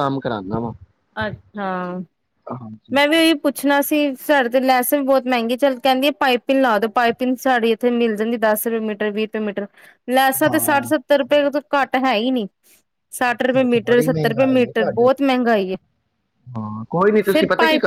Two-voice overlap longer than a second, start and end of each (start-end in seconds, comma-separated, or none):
13.3-15.3